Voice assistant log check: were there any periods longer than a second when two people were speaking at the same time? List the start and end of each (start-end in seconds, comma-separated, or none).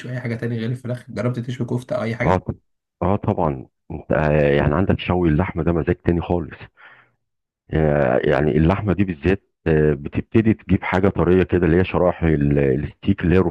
none